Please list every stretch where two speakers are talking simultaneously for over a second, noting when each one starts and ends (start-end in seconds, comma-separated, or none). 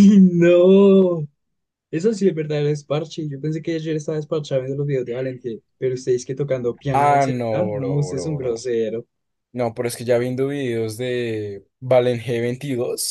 6.9-8.5